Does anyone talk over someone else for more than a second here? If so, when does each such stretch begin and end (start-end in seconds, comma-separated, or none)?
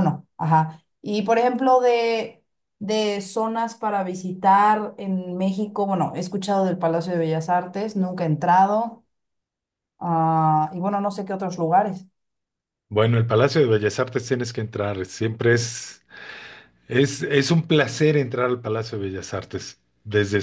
none